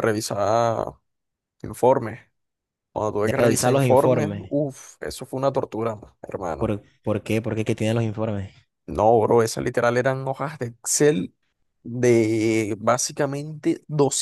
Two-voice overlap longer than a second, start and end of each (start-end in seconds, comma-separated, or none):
3.2-4.5